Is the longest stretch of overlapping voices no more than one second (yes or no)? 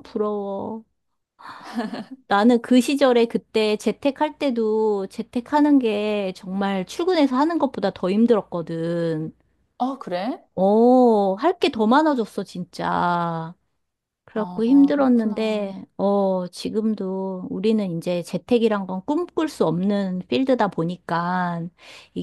no